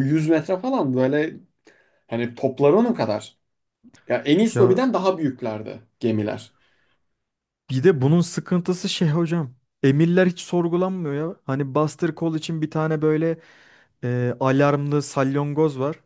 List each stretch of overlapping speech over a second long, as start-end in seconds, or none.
none